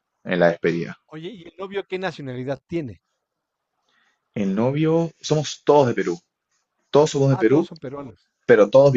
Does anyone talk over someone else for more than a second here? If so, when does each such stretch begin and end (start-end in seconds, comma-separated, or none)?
none